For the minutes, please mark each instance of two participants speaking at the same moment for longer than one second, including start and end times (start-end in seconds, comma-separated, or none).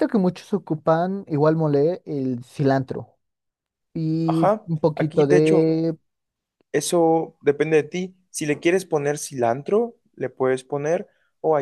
4.2-5.7